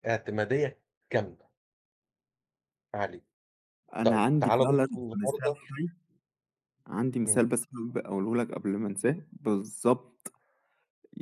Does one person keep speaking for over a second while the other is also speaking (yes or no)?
yes